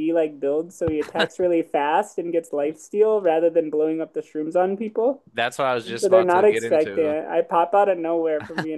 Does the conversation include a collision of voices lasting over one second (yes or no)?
yes